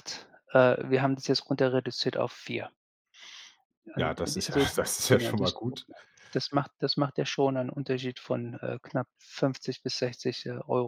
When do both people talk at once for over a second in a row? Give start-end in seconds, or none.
4.0-5.8